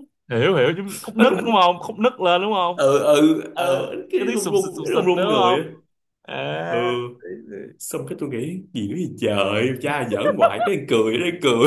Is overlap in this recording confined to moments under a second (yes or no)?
no